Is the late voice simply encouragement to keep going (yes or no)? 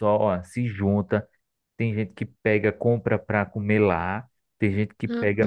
yes